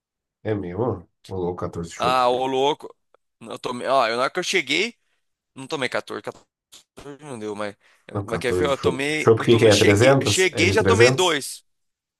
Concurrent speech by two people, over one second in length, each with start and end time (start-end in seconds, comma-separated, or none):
8.2-11.4